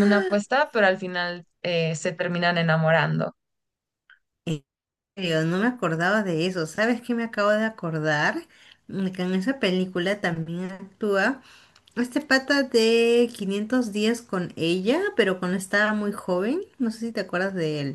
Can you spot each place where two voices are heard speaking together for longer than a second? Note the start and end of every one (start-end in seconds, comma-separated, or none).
none